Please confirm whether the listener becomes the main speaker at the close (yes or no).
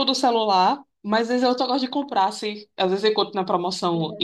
no